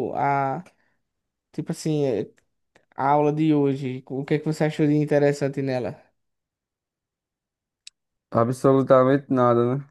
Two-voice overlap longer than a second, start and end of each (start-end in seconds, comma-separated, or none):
none